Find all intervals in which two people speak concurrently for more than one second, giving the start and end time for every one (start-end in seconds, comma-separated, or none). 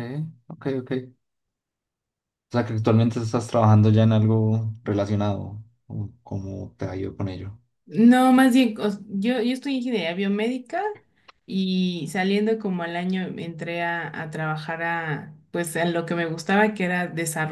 none